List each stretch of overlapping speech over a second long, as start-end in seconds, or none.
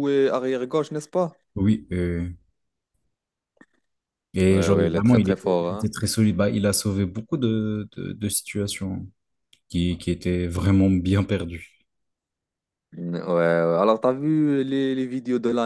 4.5-5.9